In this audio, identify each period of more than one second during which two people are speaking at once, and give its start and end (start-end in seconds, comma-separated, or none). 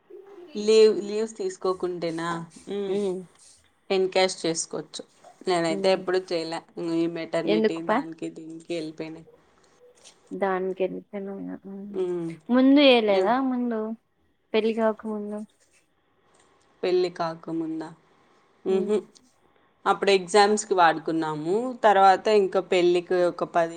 none